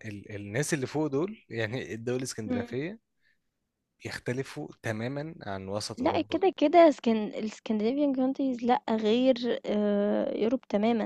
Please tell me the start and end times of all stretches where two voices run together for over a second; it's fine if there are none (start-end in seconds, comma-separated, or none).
none